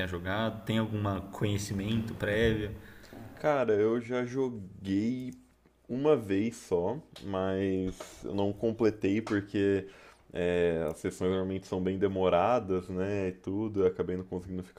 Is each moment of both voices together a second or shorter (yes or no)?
yes